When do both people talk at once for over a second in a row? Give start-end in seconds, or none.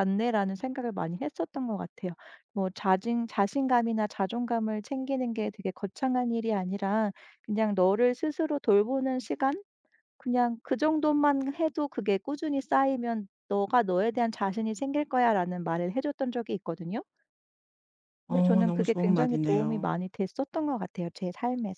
18.3-20.1